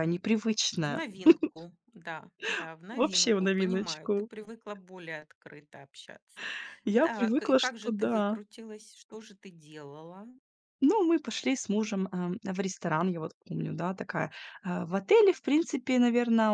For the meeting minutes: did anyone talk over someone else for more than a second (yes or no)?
yes